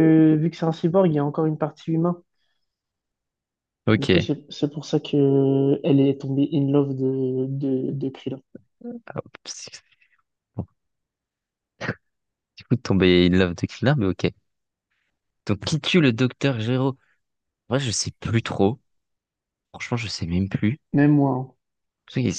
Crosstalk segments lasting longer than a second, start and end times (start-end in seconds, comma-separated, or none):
none